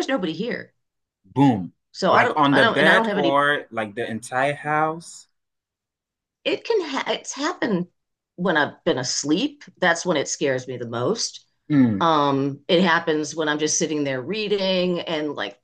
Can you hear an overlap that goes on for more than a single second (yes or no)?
yes